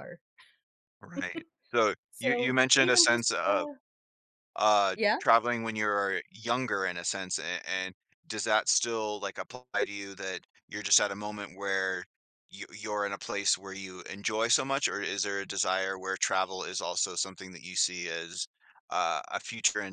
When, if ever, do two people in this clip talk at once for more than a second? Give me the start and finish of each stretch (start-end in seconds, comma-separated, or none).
2.1-3.7